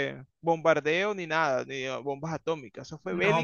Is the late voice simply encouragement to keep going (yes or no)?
no